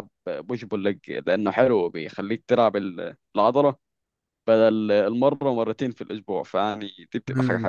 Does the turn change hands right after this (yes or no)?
yes